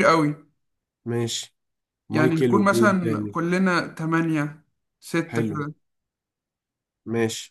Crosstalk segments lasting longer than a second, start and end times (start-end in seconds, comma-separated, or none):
2.1-3.4